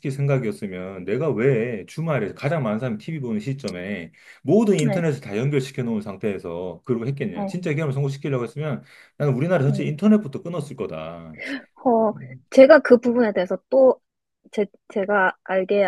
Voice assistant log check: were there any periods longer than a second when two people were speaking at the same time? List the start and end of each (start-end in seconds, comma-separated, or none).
none